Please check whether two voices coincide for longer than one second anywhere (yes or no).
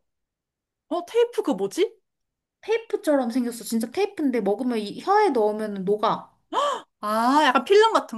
no